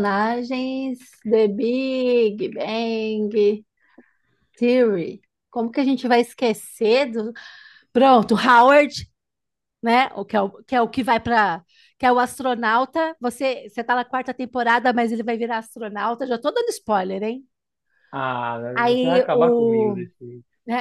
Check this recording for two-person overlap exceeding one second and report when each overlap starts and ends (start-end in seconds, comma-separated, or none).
18.7-20.1